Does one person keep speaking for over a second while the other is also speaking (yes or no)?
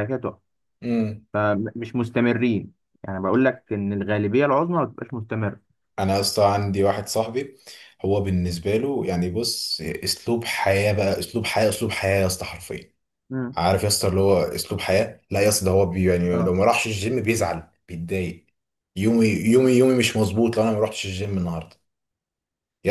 no